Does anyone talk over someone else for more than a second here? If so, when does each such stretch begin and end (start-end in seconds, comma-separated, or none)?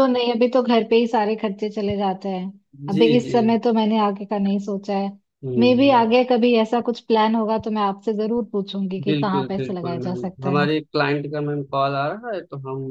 9.1-10.7